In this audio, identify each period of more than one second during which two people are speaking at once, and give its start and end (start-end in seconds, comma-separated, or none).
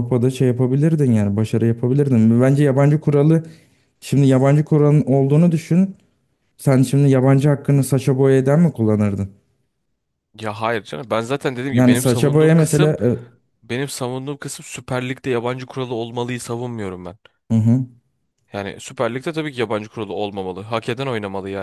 11.7-12.9